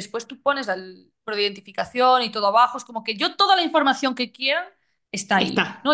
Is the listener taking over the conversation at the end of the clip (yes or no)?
no